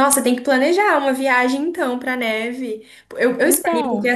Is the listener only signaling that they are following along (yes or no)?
yes